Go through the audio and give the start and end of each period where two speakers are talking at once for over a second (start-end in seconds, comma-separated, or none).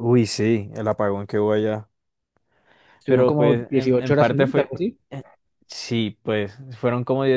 3.1-4.7